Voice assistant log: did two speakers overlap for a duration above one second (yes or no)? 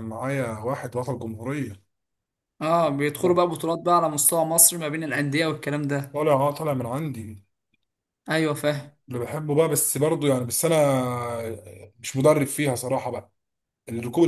no